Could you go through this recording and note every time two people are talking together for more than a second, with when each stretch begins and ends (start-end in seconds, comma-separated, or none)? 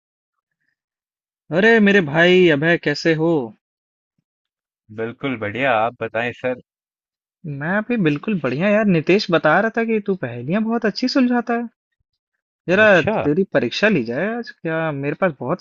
none